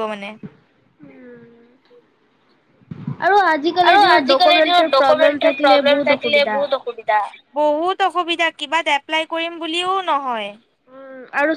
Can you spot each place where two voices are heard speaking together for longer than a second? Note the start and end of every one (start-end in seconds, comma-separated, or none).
3.9-6.6